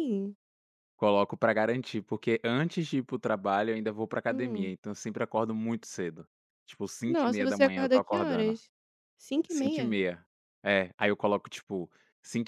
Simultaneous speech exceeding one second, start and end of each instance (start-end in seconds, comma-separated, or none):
7.0-8.5